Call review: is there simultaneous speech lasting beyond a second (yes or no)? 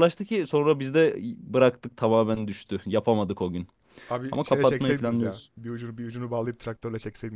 yes